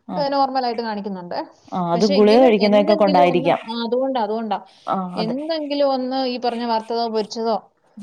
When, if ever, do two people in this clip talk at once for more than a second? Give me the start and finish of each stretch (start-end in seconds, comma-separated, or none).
1.9-3.6